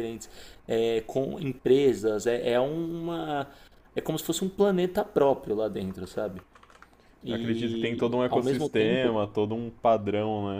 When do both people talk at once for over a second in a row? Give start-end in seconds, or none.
7.3-9.2